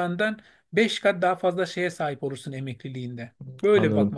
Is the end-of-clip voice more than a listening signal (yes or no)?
yes